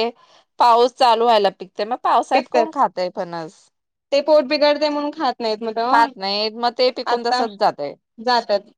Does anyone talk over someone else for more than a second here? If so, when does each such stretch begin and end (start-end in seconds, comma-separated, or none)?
none